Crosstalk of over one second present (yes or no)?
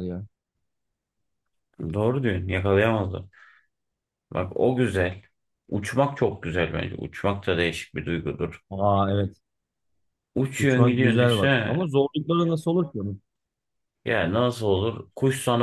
yes